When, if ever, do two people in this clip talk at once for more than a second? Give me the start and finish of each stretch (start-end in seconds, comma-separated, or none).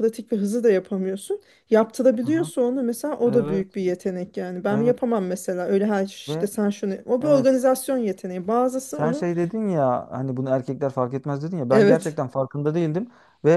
none